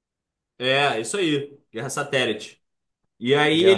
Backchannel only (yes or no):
yes